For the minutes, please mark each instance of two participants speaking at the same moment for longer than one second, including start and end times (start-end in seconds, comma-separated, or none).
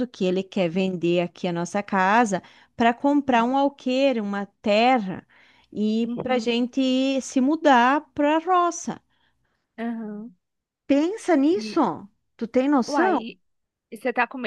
none